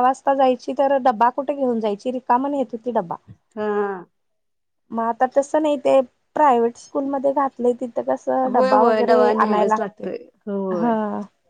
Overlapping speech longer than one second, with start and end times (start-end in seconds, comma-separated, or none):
8.5-10.1